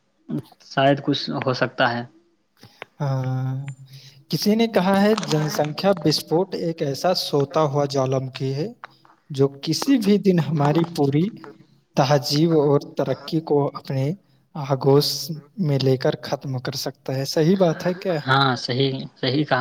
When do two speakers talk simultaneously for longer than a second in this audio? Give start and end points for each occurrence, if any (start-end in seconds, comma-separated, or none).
none